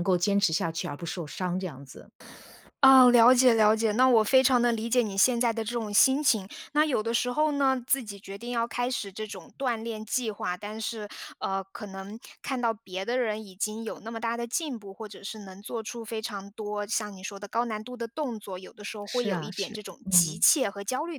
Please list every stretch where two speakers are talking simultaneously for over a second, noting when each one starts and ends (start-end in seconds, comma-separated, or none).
19.0-20.4